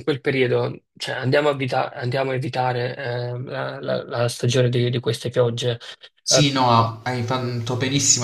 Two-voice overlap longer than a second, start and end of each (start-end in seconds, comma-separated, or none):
none